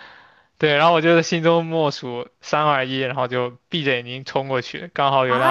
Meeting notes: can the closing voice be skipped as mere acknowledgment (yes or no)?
no